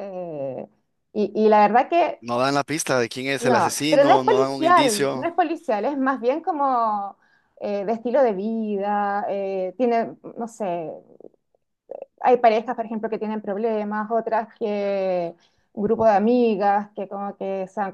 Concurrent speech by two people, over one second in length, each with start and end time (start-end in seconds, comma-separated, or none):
3.4-5.3